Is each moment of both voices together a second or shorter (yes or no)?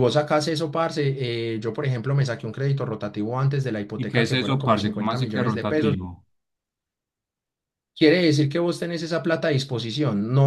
no